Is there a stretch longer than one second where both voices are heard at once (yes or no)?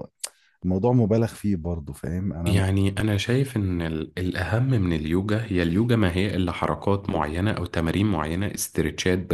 no